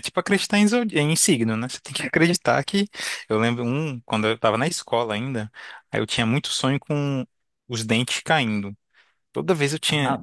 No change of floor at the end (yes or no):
no